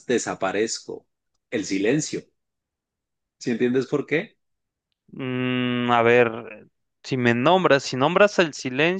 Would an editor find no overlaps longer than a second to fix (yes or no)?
yes